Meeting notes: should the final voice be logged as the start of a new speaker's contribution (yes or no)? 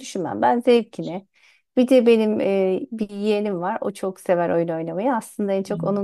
no